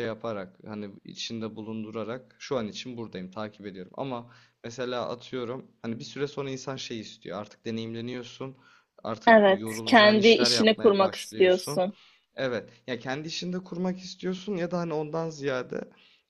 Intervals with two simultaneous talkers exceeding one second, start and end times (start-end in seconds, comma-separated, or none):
9.3-11.8